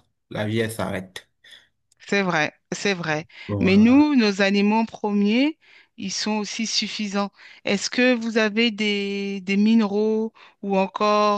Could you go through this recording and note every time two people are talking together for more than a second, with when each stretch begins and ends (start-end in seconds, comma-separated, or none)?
none